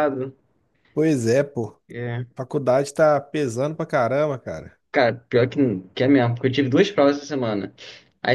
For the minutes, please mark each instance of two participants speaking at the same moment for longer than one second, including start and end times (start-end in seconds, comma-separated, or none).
none